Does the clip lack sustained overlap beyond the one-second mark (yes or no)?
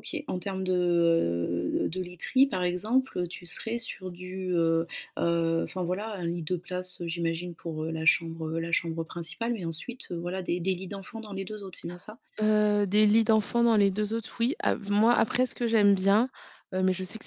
yes